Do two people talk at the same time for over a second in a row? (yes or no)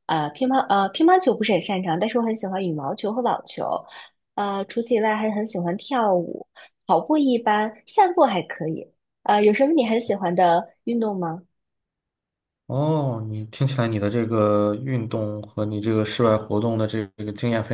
no